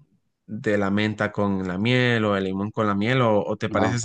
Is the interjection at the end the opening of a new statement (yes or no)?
no